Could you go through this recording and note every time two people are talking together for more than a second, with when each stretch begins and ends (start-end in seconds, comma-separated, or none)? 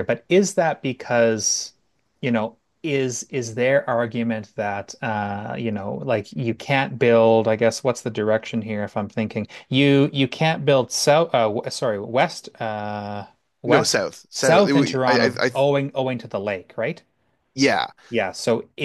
13.7-15.5